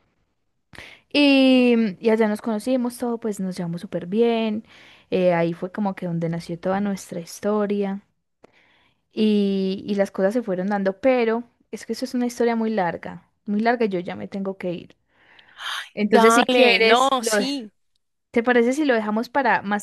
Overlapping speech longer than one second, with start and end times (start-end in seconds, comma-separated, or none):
16.0-17.3